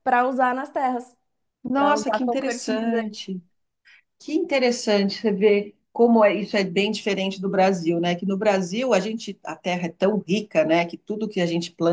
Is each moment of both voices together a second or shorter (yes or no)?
no